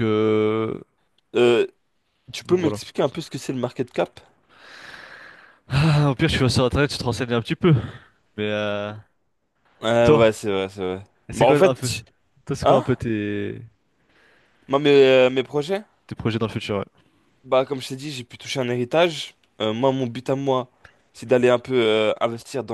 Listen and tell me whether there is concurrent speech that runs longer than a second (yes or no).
no